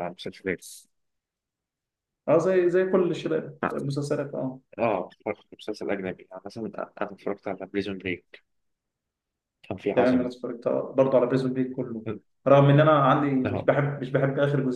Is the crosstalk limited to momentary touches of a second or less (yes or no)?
yes